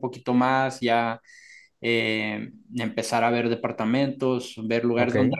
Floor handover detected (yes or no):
no